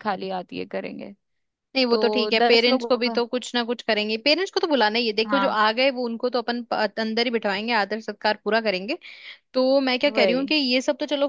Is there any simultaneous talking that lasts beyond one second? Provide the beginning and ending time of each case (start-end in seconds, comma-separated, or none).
1.9-3.2